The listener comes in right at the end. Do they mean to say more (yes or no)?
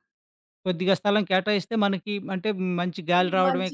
yes